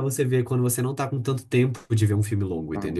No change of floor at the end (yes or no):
no